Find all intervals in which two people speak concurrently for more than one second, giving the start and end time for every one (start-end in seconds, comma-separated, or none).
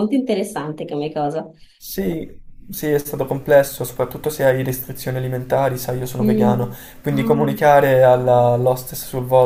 6.2-7.6